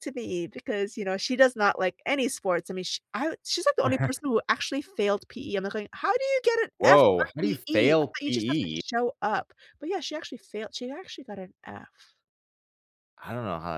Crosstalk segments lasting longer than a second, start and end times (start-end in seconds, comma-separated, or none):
6.8-8.8